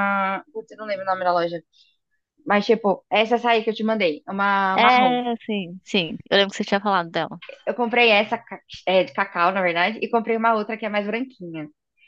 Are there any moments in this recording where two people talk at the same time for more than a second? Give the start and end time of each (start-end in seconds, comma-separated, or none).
none